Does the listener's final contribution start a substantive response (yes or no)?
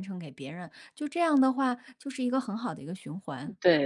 yes